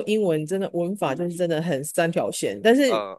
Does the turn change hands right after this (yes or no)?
no